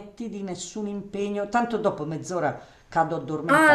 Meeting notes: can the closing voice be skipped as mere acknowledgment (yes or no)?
no